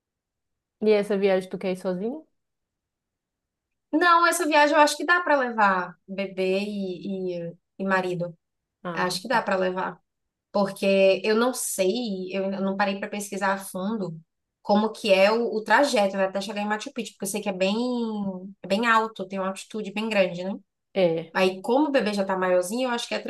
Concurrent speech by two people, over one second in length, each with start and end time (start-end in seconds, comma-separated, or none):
none